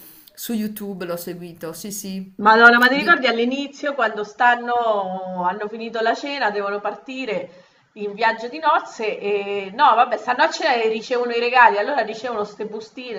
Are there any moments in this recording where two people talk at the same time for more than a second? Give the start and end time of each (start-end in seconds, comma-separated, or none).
none